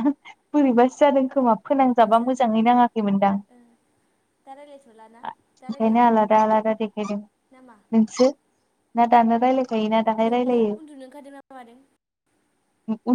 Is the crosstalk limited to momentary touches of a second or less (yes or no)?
yes